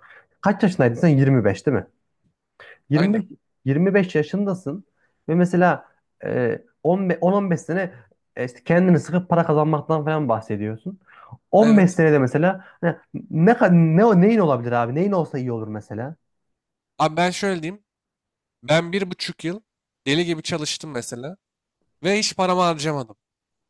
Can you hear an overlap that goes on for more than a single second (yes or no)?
no